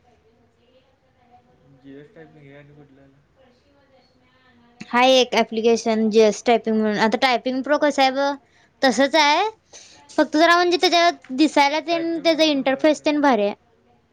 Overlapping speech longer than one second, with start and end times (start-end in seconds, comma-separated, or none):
11.9-13.2